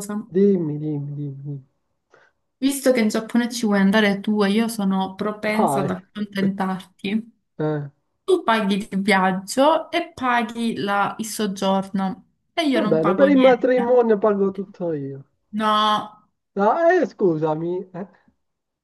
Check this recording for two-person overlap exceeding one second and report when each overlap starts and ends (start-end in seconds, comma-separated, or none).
12.7-14.0